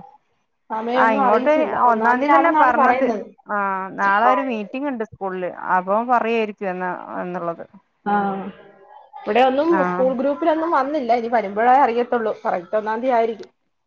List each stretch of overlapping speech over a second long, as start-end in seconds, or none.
1.0-3.1